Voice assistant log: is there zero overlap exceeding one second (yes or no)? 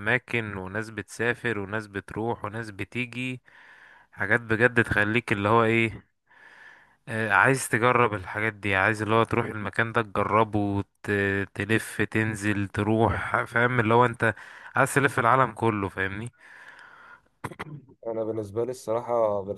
yes